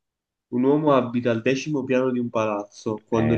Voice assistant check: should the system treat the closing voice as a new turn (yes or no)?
yes